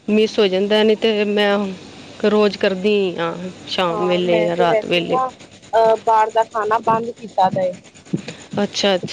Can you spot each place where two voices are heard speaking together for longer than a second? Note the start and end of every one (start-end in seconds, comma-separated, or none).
3.9-5.2